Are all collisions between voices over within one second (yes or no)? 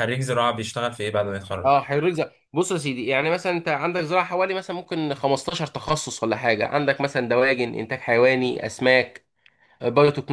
yes